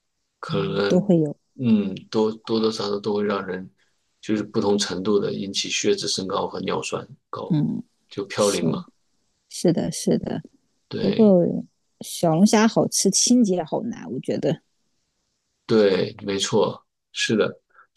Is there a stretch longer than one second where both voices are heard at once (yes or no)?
no